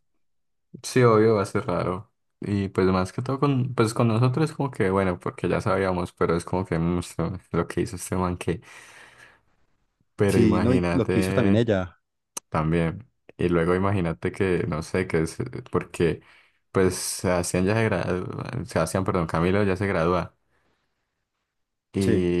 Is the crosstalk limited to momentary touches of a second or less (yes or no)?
no